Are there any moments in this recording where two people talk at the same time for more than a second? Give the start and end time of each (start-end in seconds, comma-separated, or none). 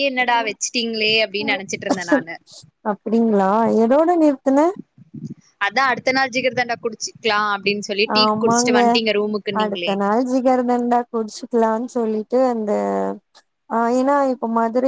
none